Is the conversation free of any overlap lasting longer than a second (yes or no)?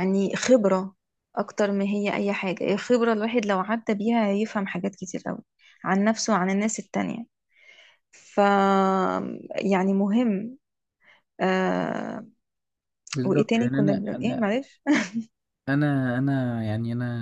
no